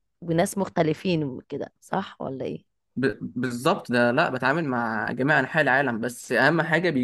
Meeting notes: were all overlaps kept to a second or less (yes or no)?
yes